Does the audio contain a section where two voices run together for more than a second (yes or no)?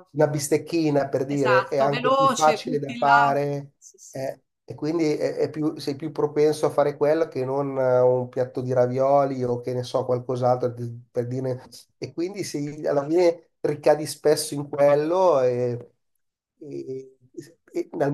yes